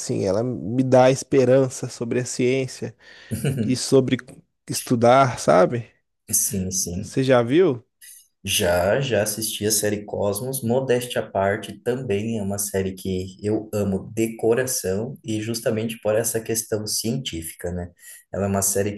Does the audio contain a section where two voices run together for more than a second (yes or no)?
no